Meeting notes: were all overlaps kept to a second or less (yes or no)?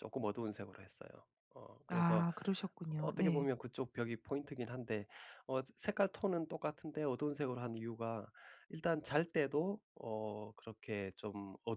yes